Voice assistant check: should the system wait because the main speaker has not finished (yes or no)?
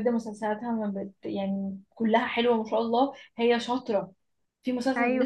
yes